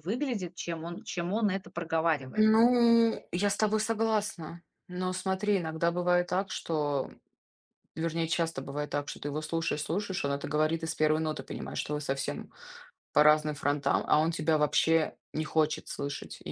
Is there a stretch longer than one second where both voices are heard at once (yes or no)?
no